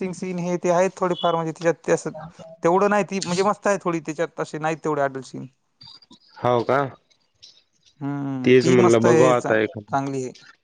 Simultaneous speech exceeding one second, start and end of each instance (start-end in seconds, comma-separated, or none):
8.5-10.0